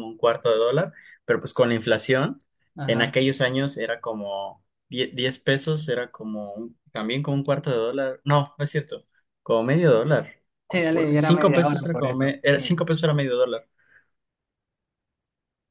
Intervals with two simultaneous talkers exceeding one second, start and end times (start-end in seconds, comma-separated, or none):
10.9-12.6